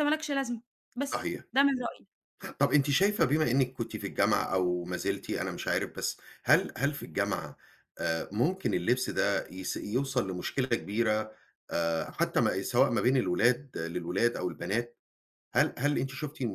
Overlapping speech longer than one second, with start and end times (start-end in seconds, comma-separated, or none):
none